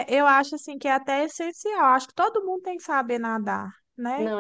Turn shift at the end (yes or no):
yes